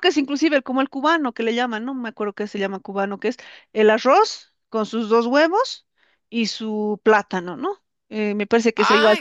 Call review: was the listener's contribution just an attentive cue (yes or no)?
yes